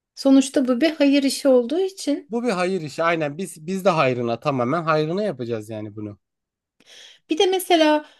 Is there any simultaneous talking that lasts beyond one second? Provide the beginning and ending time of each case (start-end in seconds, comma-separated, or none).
none